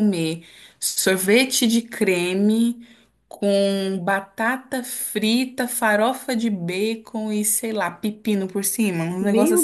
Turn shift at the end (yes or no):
yes